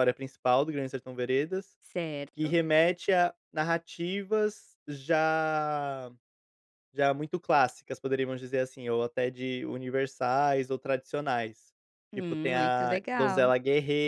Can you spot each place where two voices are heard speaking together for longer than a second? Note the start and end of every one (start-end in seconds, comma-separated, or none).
12.1-13.5